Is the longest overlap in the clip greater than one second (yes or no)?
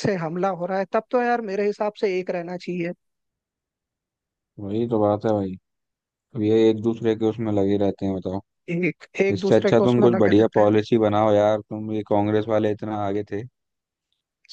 yes